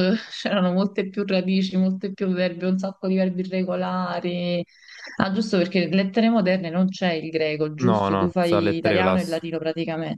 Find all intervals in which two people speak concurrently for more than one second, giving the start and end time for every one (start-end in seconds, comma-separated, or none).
7.8-9.4